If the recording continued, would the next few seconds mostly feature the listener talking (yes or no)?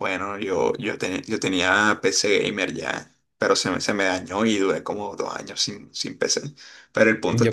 yes